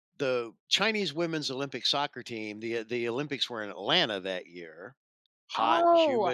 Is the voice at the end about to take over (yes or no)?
yes